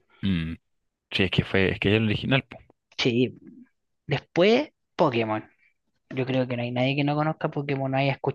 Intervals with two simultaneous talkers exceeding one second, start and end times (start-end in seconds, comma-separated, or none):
none